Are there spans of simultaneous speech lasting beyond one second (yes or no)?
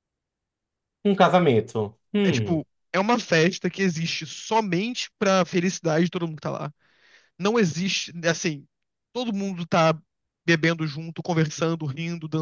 no